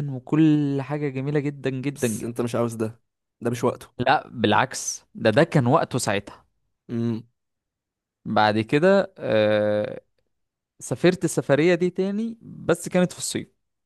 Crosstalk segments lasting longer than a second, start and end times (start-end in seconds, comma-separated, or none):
none